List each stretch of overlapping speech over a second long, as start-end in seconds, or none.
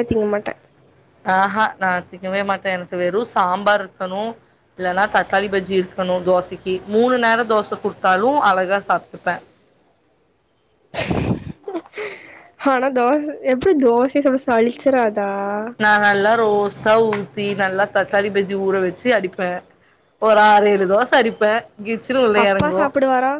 none